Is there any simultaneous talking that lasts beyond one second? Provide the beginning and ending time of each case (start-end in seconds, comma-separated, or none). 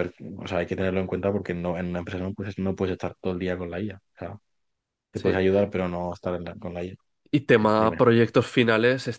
none